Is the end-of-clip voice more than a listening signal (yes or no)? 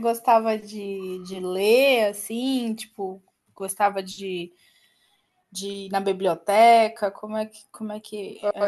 yes